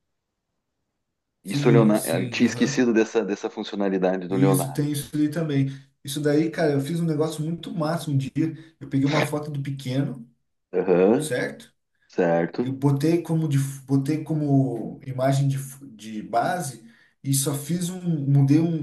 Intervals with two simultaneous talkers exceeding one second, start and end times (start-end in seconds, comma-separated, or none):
1.4-2.9